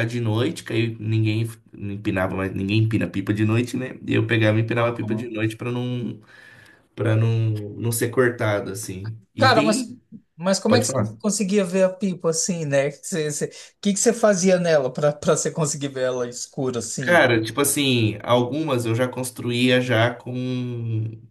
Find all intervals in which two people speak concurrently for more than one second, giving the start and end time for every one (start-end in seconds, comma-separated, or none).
none